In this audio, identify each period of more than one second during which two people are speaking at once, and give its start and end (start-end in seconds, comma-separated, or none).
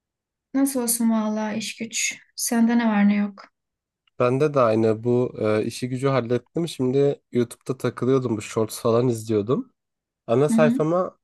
none